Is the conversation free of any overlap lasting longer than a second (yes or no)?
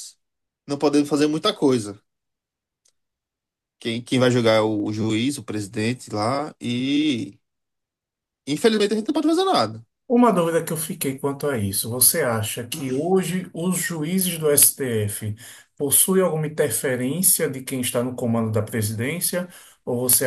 yes